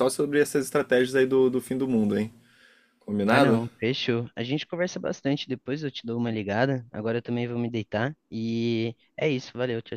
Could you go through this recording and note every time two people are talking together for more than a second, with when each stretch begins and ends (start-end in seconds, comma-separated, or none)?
none